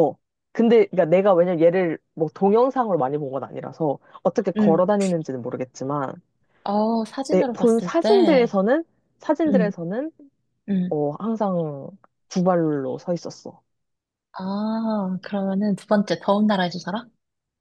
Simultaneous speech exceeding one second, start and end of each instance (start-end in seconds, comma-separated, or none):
7.3-8.6